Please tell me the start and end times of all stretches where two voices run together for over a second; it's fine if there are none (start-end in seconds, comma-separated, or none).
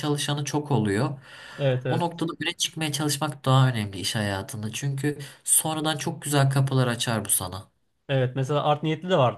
none